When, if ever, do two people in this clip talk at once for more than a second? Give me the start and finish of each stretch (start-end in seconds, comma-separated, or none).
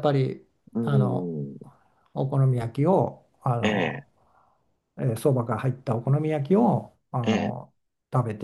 none